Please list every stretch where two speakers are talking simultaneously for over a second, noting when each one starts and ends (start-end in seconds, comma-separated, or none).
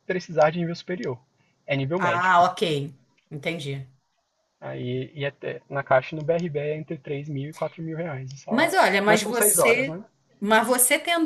8.5-10.0